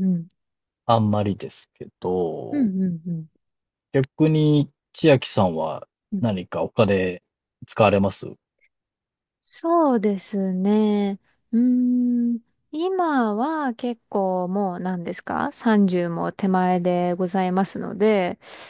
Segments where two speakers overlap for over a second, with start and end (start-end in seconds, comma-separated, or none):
none